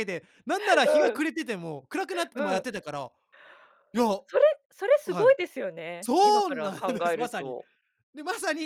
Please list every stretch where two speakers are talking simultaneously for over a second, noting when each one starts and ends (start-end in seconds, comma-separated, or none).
6.0-7.6